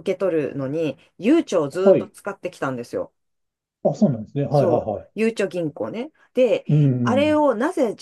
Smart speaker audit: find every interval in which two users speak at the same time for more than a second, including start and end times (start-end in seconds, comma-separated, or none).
none